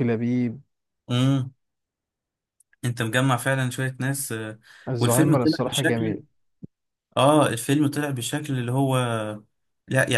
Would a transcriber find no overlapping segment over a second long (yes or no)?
no